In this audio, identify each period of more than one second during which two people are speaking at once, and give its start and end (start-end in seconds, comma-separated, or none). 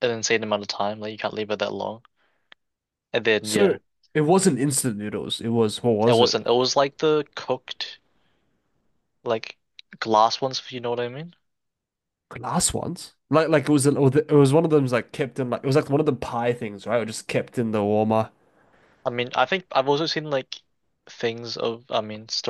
none